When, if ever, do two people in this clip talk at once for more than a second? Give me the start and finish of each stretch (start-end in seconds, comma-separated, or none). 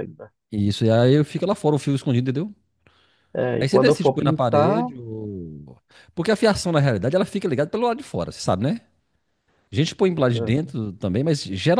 3.6-4.9